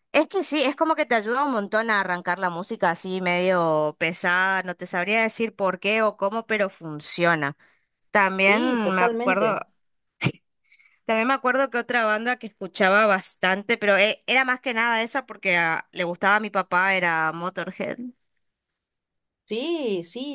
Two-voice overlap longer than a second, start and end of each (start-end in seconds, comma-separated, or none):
8.3-9.6